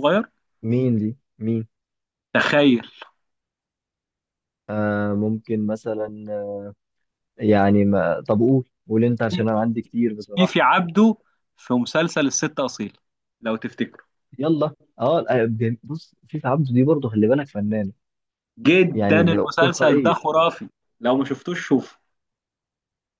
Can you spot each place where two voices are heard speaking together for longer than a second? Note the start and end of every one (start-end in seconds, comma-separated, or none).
18.9-20.3